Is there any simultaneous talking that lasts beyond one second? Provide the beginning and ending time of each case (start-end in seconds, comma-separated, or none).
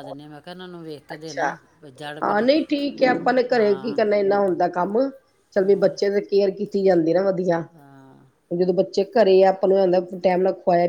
none